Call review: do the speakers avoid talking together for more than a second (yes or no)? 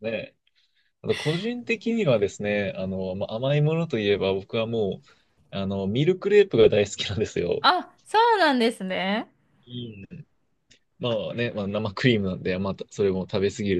yes